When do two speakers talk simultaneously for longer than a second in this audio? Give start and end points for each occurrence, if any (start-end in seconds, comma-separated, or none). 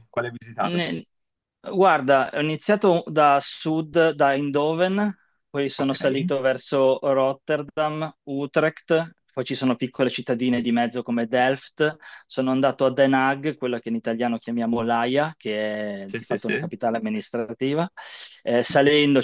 none